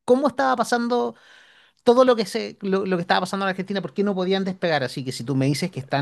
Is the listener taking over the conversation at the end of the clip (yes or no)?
no